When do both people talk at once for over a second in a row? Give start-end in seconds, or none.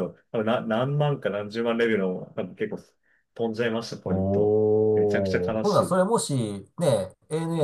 4.0-6.0